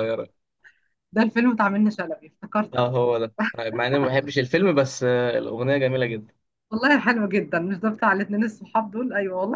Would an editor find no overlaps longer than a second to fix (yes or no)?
yes